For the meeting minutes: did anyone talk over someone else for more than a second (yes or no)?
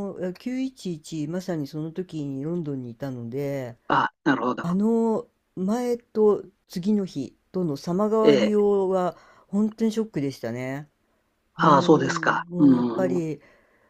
yes